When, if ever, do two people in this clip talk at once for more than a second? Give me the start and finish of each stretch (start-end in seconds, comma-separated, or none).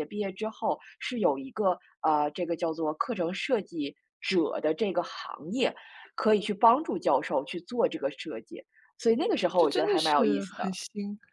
9.5-10.8